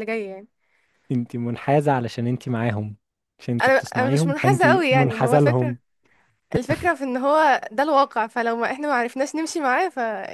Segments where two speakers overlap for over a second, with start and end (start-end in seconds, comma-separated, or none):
3.6-5.8